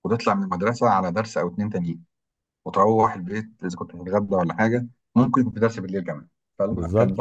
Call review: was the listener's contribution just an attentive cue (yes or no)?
no